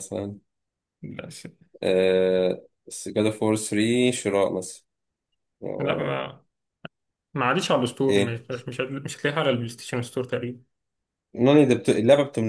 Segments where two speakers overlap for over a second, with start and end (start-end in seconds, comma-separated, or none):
none